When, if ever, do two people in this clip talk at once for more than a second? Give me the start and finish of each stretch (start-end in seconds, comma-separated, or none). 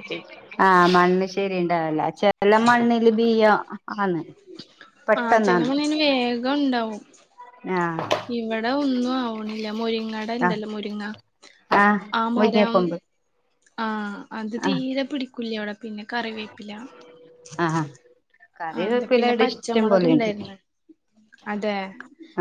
18.8-20.3